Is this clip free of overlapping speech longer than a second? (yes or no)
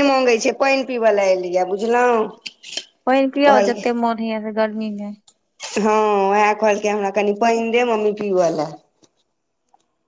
yes